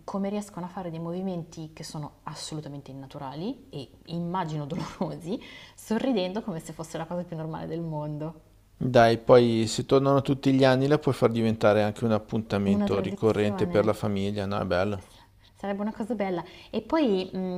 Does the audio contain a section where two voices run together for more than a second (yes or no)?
yes